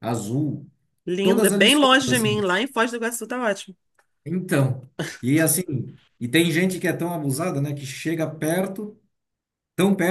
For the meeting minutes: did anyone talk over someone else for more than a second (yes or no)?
yes